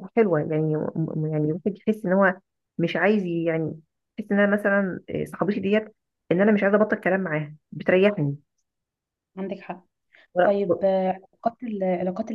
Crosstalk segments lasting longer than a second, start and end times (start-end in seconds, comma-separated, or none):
none